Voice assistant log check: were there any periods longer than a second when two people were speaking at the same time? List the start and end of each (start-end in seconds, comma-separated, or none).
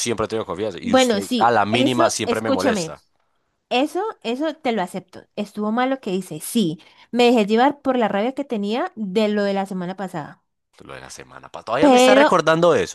0.8-2.9